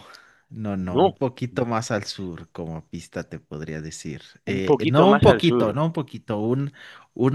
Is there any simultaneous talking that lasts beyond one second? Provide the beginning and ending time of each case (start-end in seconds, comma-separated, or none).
4.5-5.8